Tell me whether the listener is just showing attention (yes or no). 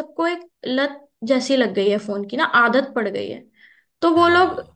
yes